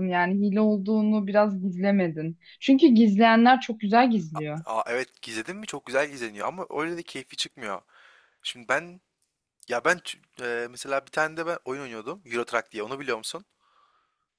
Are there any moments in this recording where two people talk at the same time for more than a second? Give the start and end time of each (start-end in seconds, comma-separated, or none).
none